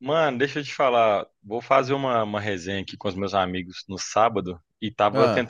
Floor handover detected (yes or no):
no